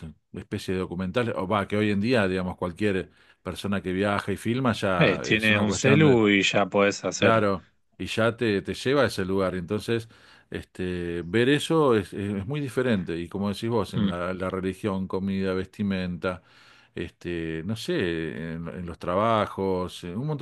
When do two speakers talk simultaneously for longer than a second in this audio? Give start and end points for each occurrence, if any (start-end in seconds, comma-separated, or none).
5.0-6.2